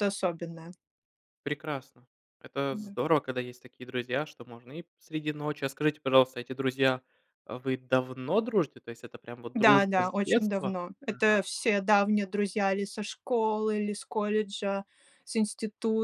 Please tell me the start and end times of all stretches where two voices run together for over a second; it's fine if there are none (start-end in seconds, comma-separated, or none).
9.6-11.4